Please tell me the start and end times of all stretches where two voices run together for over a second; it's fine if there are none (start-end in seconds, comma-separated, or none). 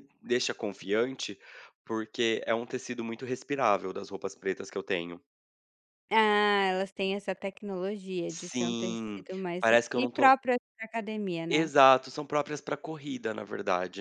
8.3-10.3